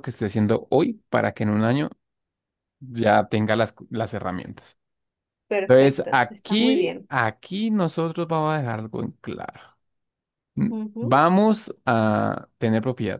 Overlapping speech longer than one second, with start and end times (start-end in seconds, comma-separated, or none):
5.7-7.1